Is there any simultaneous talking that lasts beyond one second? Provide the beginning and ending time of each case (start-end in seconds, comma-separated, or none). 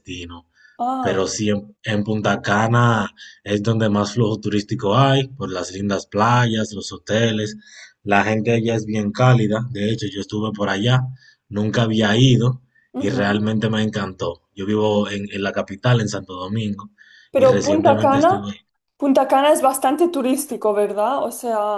17.3-18.6